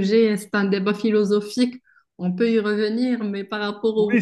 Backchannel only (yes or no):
no